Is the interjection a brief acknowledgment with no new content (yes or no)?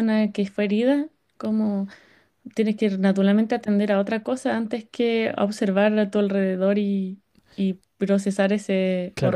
no